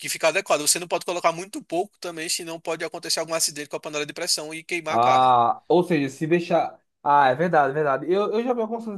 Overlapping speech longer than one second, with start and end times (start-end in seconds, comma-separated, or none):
none